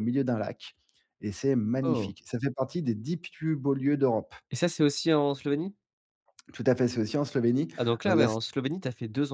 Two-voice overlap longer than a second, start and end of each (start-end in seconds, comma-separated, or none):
none